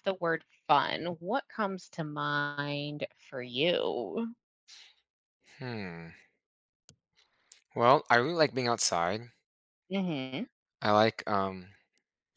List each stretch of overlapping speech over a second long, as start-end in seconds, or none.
none